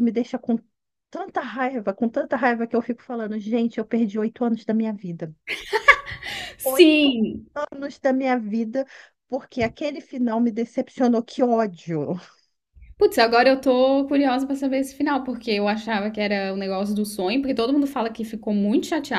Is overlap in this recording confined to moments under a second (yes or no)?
yes